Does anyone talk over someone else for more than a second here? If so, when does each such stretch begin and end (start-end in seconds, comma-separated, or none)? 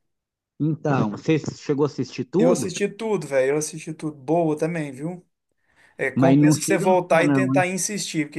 6.1-7.7